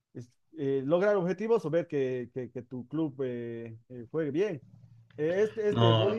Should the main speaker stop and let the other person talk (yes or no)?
no